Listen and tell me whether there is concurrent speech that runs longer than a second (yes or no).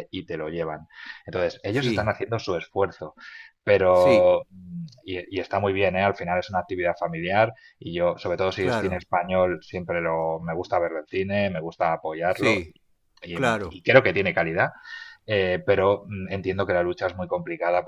no